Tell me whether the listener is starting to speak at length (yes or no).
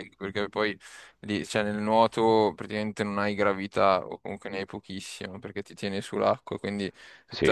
no